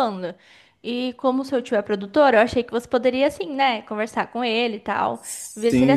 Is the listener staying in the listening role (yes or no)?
no